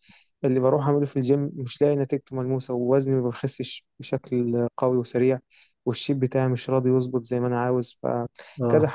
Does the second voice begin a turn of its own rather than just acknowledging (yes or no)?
no